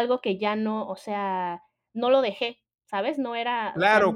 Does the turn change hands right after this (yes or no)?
yes